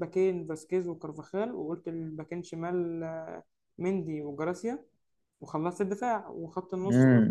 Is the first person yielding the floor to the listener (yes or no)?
yes